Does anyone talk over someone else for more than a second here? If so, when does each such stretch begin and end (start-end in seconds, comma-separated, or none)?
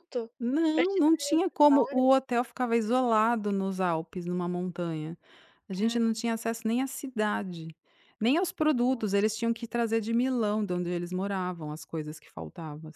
0.7-2.1